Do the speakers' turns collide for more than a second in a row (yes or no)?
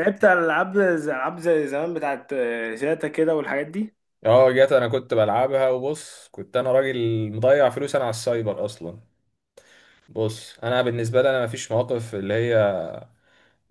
no